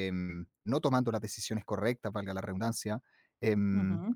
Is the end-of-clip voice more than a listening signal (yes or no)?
no